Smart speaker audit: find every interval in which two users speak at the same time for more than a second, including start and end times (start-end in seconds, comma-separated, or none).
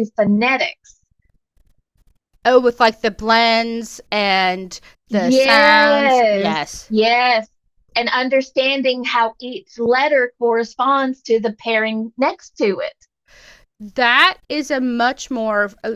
5.1-6.9